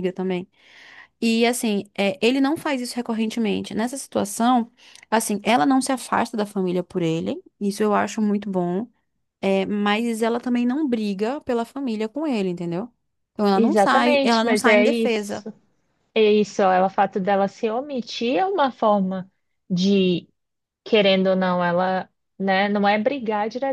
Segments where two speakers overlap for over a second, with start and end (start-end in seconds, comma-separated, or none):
13.5-15.5